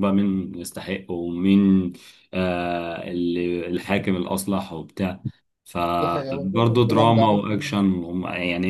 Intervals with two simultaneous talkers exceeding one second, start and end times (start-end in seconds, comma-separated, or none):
6.0-7.8